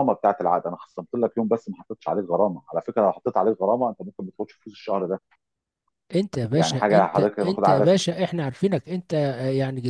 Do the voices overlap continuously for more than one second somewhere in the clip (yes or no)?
yes